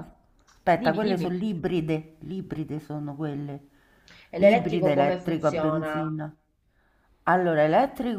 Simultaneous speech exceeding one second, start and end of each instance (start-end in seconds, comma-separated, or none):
4.4-6.1